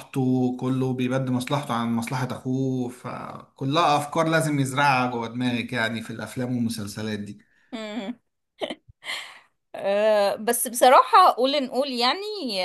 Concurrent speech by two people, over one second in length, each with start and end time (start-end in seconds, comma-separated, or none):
none